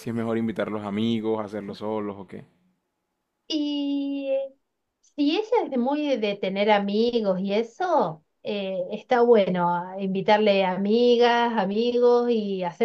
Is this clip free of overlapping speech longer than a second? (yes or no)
yes